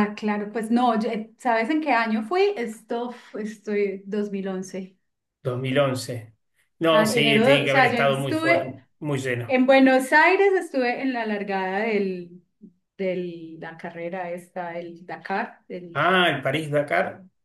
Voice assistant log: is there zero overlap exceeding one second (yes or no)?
no